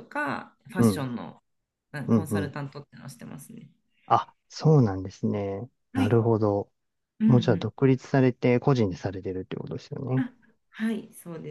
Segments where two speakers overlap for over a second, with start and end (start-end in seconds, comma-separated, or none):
none